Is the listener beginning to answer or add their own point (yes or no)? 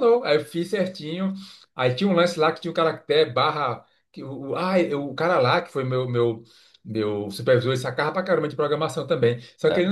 no